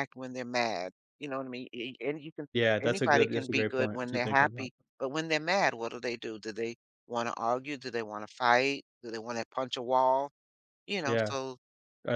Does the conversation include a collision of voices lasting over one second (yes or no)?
yes